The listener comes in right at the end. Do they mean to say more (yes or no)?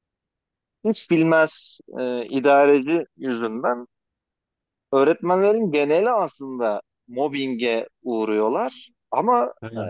no